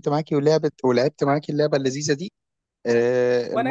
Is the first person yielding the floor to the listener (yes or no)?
no